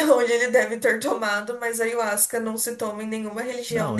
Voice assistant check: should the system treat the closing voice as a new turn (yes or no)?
no